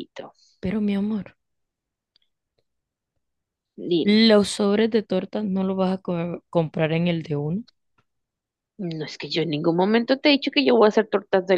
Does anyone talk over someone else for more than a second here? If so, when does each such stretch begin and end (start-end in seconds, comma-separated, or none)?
none